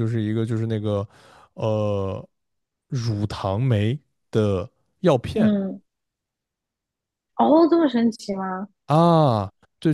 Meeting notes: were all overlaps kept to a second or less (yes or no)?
yes